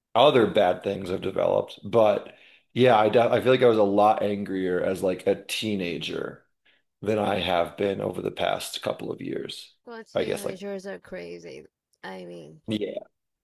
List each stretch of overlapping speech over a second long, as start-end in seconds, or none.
none